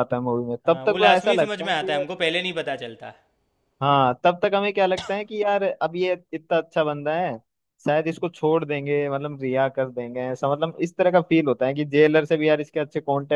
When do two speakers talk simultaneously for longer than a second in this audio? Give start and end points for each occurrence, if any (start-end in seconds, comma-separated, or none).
0.7-2.0